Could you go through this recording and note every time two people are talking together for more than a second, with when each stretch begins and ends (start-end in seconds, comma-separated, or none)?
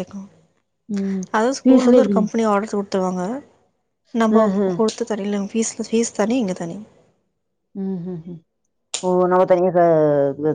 none